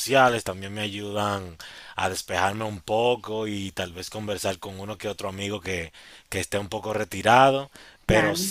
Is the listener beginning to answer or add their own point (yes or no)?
no